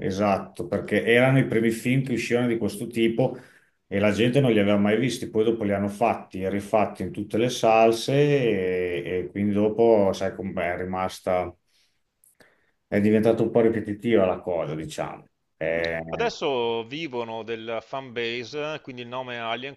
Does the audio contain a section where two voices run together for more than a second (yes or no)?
no